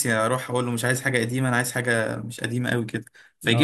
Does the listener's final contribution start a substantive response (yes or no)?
no